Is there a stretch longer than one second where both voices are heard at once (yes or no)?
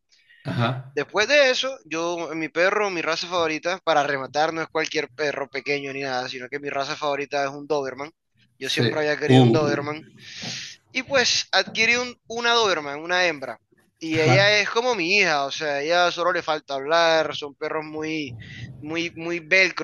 yes